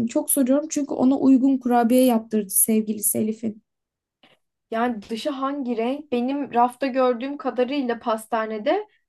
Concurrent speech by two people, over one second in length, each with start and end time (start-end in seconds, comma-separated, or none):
none